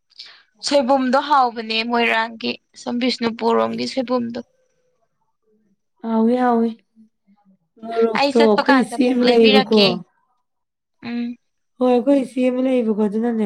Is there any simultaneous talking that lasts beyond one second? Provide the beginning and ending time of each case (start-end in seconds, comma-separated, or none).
8.2-9.8